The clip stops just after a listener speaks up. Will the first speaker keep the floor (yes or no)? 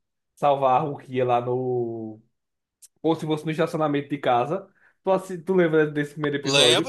no